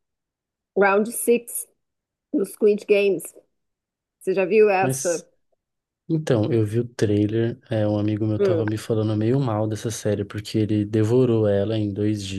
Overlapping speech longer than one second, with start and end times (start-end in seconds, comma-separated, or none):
none